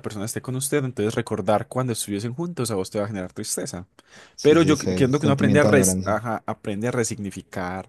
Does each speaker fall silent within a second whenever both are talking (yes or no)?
no